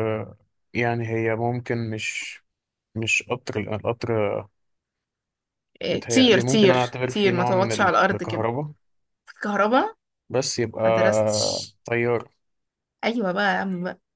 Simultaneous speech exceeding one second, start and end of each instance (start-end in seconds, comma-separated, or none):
5.9-8.5